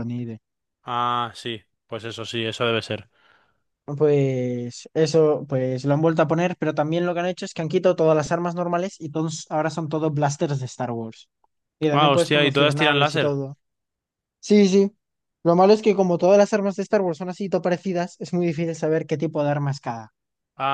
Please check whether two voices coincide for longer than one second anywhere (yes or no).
yes